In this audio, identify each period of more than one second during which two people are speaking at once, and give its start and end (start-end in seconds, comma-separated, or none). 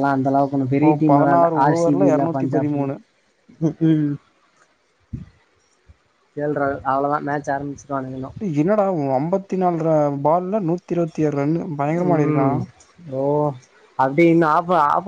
0.8-2.8